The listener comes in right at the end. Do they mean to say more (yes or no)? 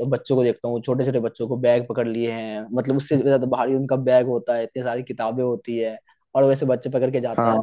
no